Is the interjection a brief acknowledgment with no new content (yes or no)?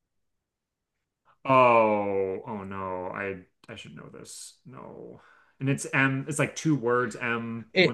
no